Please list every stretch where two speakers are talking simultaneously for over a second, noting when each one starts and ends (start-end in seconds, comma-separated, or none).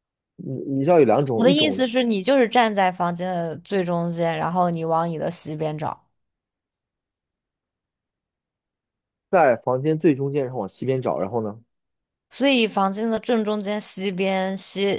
none